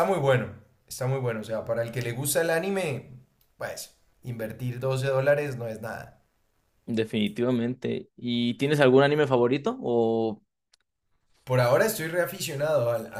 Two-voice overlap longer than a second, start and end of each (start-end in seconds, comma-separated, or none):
none